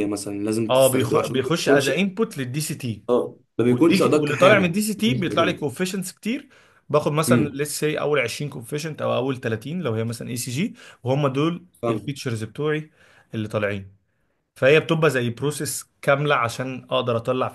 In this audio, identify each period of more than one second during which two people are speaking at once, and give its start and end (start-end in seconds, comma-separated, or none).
0.7-1.9, 3.7-5.7